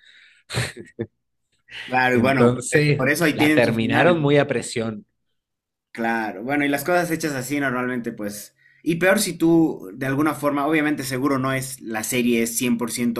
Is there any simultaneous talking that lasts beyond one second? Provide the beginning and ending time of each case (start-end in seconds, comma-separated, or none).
2.1-4.2